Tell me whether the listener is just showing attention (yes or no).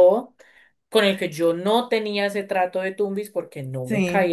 yes